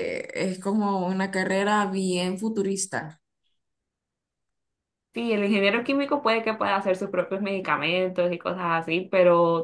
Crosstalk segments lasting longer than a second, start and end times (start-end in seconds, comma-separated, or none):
none